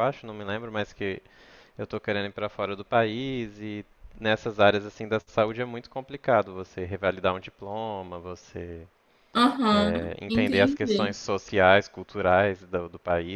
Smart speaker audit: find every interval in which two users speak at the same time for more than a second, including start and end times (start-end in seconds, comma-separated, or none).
9.7-11.2